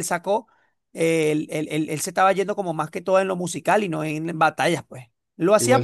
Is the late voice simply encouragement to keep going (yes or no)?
yes